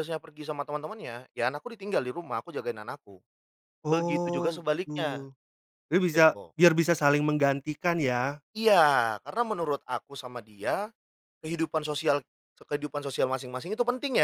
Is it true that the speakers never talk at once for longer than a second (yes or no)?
no